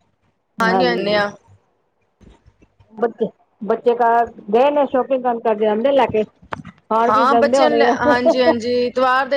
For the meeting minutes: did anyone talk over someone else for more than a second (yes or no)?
yes